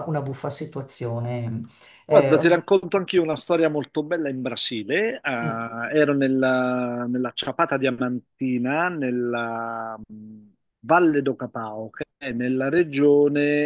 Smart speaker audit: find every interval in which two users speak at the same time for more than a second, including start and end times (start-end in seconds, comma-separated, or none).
none